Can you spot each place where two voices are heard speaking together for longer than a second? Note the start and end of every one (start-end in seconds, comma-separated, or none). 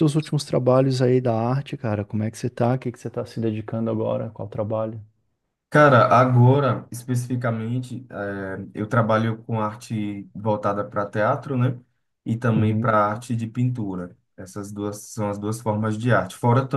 none